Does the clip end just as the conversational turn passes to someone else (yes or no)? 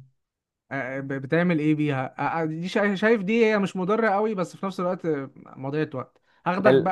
no